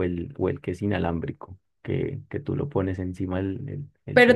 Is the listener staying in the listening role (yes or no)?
no